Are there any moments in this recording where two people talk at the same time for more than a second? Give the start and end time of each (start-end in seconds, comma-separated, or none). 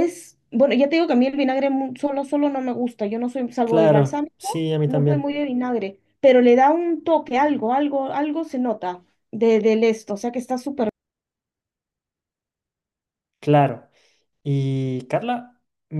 3.6-5.3